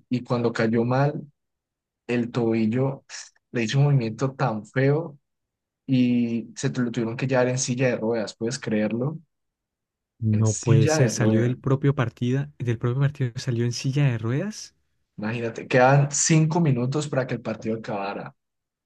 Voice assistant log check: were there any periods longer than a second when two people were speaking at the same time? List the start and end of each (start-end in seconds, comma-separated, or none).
10.3-11.6